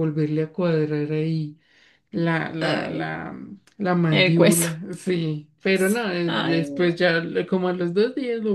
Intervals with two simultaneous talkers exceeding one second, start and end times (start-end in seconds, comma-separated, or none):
5.7-7.0